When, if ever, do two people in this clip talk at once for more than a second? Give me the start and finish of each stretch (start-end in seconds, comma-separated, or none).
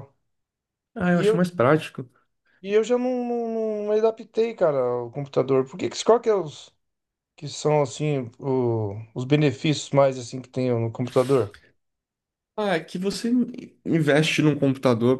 none